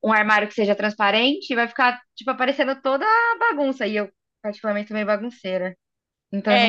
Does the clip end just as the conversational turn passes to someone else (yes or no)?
yes